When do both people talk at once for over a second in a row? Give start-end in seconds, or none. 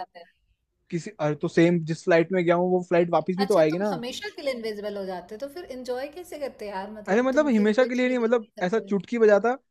7.1-8.9